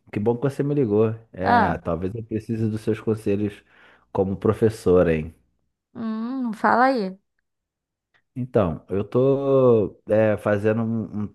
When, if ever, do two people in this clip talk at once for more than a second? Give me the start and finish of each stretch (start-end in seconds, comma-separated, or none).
none